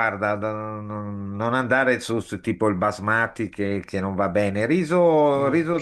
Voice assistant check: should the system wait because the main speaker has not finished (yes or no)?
yes